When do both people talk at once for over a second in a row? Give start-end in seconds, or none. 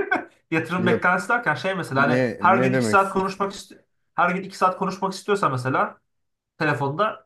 1.9-3.4